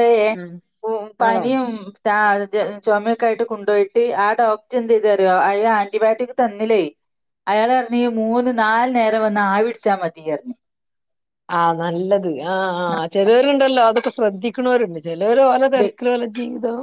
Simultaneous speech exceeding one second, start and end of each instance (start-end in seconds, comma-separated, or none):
none